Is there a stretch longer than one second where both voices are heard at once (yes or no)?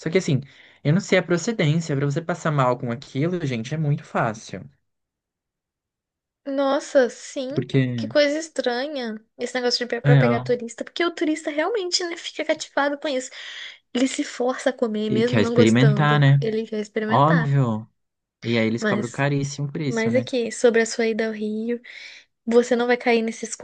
yes